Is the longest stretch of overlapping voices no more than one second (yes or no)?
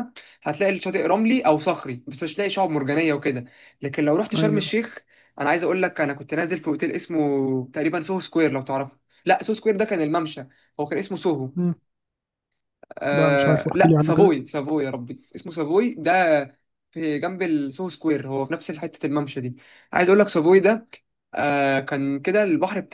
no